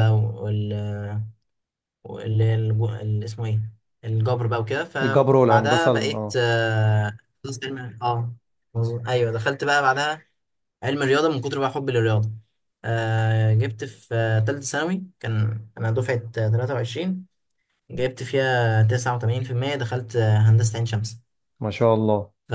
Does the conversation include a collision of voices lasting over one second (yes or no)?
yes